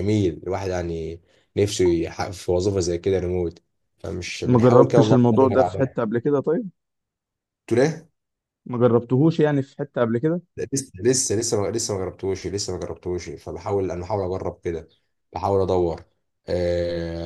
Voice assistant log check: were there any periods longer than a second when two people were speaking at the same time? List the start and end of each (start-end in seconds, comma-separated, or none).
4.4-5.9